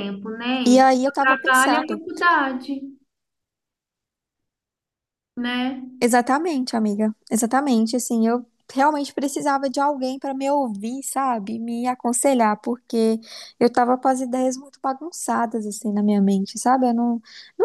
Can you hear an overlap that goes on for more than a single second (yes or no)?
yes